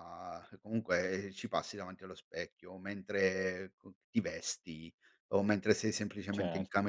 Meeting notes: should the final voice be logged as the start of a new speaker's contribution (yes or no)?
no